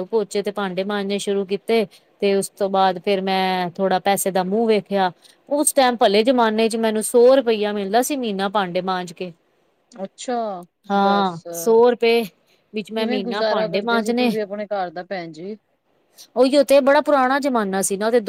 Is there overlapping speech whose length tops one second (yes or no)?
yes